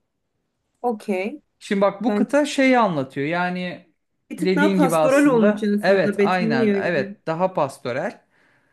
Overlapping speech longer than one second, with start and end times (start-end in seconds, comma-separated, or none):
4.3-7.2